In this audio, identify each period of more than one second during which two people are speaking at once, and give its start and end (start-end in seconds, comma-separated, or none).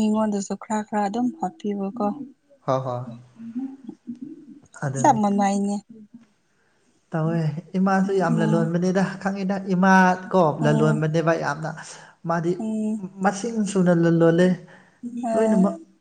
none